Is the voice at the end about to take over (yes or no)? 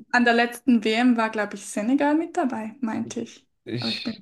yes